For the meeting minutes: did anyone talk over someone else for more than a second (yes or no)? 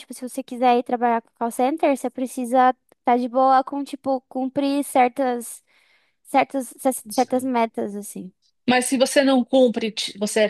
no